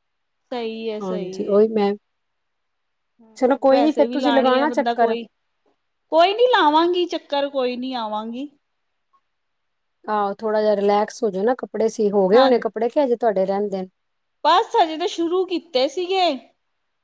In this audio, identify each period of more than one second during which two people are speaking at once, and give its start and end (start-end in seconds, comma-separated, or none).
3.4-5.1